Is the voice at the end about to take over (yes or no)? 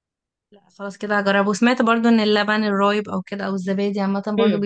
yes